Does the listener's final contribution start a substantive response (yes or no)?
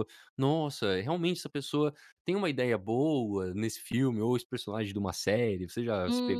yes